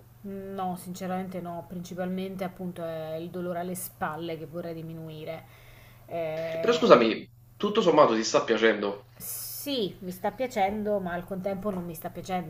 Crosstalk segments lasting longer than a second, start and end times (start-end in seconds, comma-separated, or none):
none